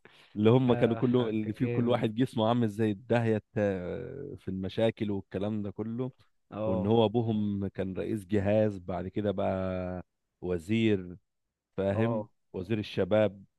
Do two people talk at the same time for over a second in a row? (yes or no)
yes